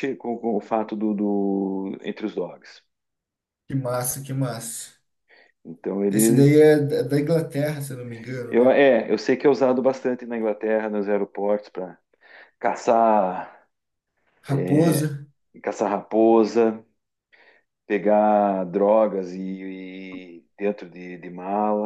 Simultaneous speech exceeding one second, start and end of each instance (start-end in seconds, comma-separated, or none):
none